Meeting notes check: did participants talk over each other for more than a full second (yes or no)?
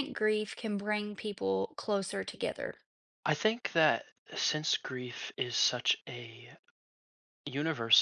no